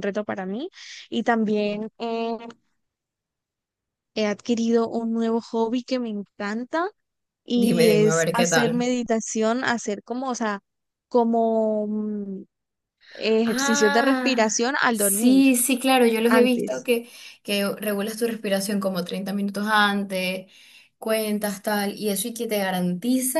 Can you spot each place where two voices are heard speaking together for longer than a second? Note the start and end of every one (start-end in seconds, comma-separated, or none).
7.5-8.9, 13.4-15.4